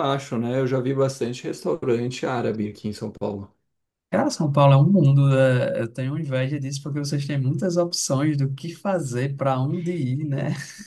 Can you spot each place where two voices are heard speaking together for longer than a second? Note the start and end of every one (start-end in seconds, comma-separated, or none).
none